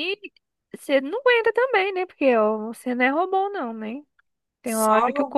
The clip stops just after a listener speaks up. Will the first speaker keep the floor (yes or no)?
yes